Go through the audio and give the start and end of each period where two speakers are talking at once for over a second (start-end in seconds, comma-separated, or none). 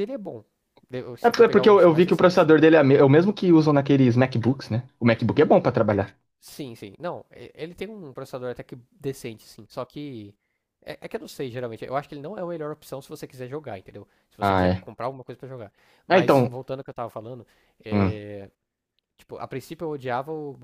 1.2-2.5